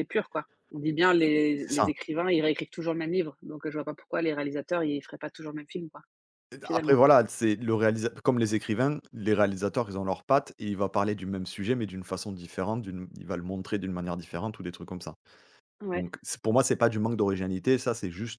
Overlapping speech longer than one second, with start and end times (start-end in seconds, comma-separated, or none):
none